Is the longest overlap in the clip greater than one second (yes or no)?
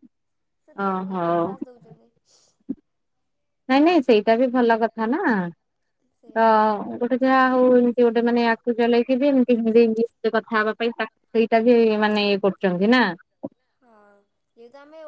no